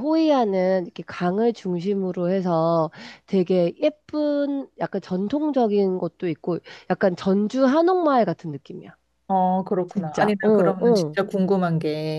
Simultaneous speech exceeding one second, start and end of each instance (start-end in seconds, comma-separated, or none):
9.9-11.2